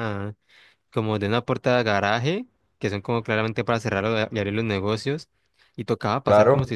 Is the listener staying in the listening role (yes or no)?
yes